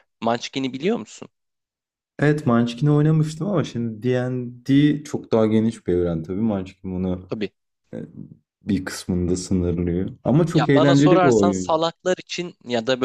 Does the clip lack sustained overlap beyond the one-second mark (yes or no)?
no